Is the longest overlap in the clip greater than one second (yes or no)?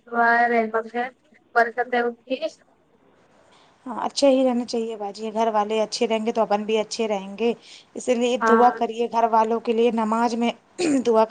no